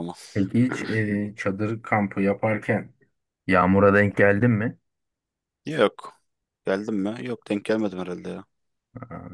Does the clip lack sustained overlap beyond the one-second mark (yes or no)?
yes